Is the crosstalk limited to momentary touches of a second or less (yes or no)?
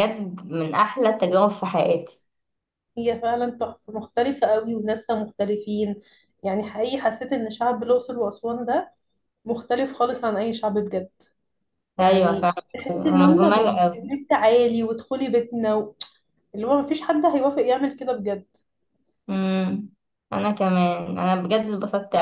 no